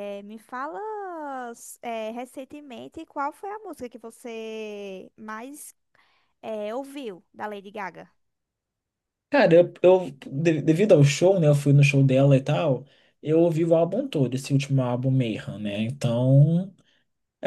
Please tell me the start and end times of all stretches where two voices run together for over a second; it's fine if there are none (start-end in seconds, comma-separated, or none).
none